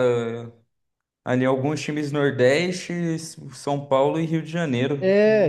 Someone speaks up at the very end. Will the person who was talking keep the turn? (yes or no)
no